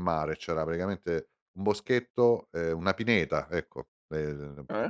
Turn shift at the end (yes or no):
no